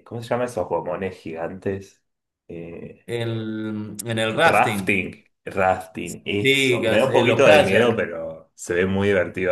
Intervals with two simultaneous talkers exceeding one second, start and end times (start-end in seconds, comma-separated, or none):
6.4-8.0